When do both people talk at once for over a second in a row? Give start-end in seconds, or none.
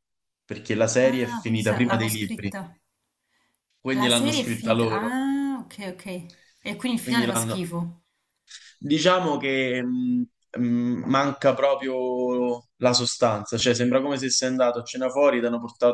1.0-2.5, 3.9-5.2